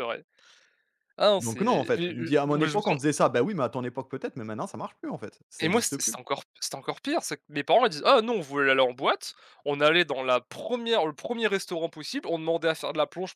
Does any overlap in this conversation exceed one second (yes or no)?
yes